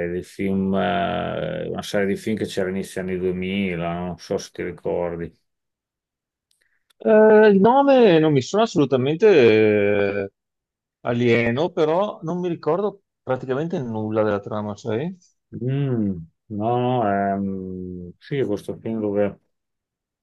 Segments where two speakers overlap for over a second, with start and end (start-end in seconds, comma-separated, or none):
none